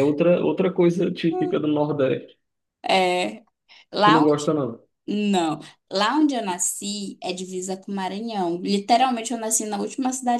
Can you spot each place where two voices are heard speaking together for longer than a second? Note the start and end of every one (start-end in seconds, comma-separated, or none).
none